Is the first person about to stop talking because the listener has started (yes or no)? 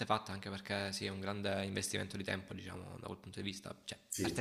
no